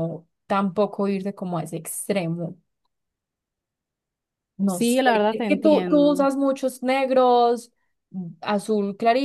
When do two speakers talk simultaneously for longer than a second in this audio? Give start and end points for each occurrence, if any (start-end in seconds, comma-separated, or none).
4.7-6.3